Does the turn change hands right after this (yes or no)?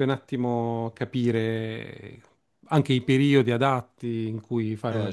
yes